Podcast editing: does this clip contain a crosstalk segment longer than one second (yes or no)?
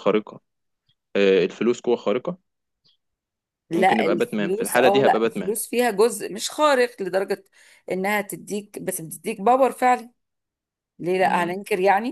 yes